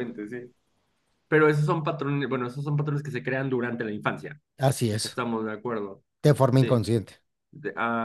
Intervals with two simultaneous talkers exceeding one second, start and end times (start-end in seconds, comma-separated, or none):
none